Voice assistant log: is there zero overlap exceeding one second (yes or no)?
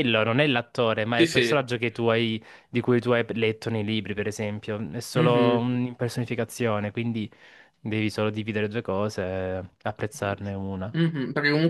yes